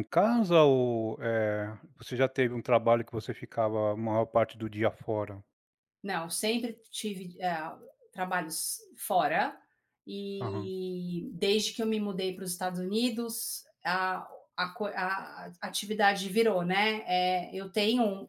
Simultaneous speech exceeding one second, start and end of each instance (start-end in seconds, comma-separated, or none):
none